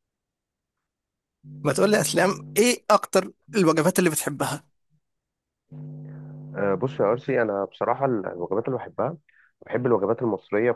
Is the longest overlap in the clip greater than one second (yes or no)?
no